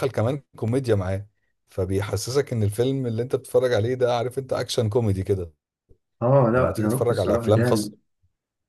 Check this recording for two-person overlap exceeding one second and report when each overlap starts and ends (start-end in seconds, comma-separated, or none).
6.5-7.9